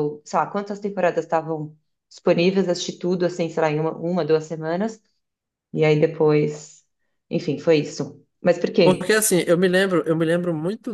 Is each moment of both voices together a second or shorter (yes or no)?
yes